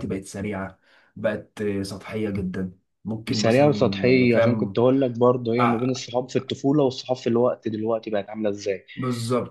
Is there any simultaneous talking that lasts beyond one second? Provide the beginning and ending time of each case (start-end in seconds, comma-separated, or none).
3.3-4.8